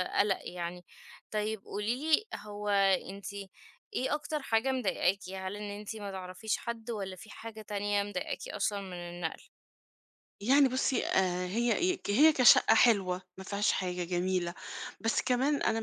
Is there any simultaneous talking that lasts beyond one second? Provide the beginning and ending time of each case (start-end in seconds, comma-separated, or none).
none